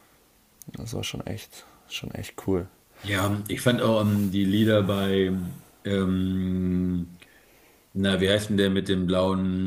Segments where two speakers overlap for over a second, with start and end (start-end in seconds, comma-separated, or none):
none